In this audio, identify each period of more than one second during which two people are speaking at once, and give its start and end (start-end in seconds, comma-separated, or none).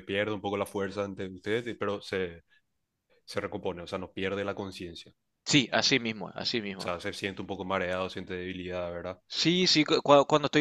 none